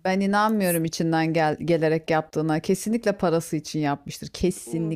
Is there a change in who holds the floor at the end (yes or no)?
yes